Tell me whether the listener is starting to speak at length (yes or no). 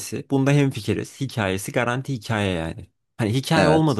no